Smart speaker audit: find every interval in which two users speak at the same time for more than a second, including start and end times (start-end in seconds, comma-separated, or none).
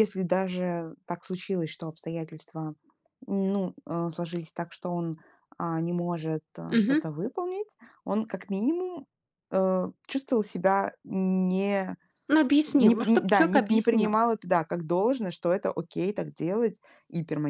12.7-14.2